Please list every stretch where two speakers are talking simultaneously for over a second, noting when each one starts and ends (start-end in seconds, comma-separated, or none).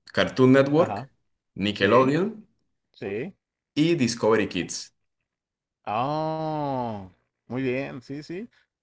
none